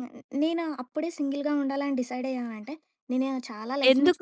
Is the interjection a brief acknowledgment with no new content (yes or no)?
no